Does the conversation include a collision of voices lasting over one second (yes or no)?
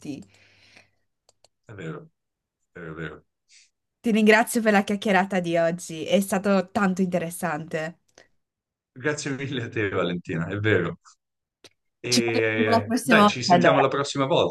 yes